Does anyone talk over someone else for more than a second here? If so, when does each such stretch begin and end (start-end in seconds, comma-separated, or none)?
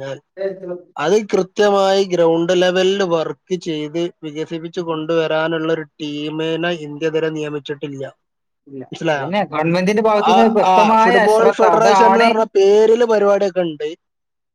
10.3-12.3